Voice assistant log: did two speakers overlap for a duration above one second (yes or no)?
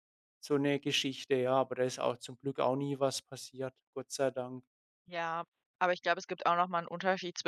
no